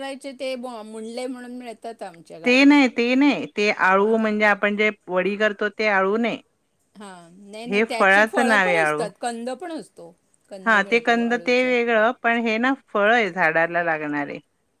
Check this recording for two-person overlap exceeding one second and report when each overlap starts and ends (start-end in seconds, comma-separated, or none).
none